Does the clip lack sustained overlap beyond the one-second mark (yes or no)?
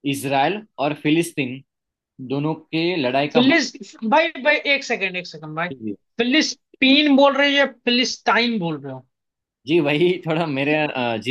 yes